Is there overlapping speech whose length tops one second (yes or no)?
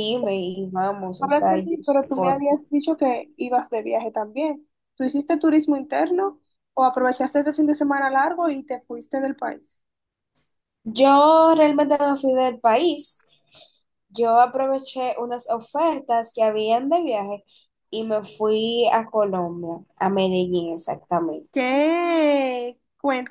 yes